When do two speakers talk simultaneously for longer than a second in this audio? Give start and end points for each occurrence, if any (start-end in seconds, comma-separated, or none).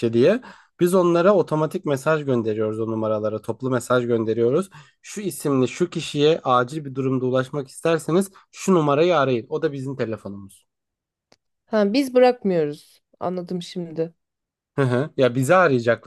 none